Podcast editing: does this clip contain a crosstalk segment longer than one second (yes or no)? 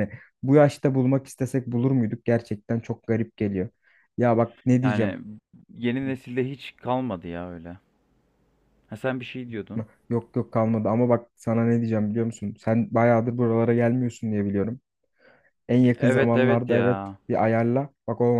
yes